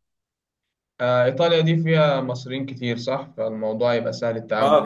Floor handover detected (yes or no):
yes